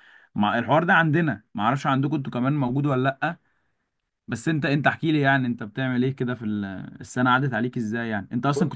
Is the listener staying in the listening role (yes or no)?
yes